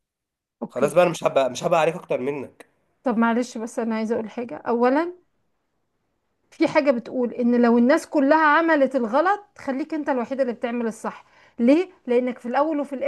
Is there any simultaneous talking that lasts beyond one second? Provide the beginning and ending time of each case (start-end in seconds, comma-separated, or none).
none